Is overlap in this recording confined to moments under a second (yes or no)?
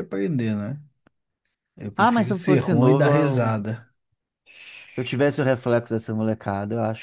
no